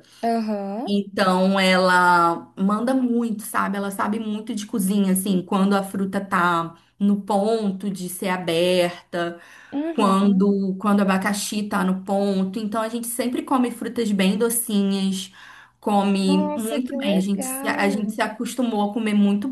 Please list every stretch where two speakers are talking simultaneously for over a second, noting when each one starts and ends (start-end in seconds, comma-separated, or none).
16.2-18.2